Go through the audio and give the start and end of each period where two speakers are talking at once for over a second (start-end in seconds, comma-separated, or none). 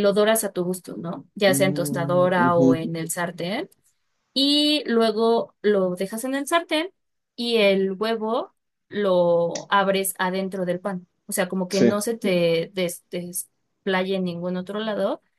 1.5-2.8